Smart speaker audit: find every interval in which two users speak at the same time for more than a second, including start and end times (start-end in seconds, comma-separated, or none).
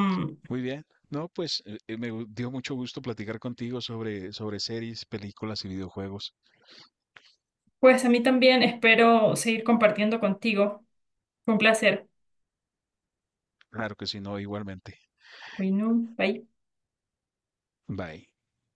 none